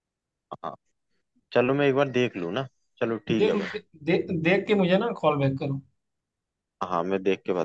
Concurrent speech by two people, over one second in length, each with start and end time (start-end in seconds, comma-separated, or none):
none